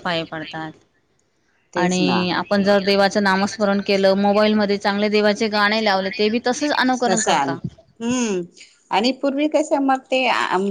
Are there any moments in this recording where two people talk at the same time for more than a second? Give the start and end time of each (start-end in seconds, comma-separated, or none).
none